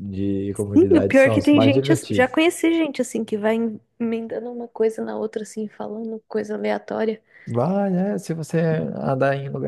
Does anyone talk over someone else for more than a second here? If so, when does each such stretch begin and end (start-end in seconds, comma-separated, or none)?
0.7-2.4